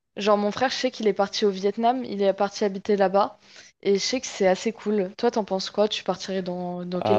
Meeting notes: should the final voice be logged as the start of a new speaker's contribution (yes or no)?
yes